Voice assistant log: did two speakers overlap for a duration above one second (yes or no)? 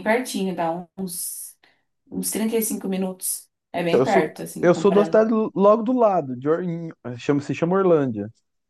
yes